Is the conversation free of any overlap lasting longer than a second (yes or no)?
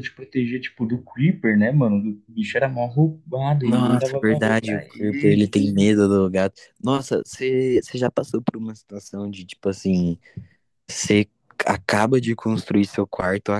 no